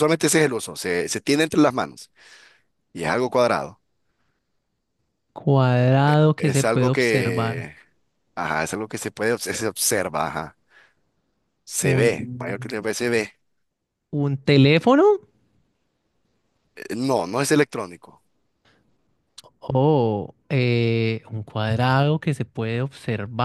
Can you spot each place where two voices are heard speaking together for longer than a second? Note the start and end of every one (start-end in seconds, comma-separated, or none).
6.4-7.7